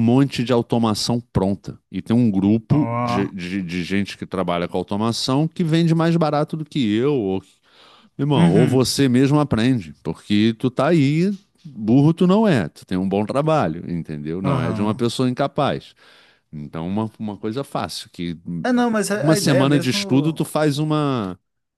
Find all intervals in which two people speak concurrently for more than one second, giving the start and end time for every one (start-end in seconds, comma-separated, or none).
19.1-20.5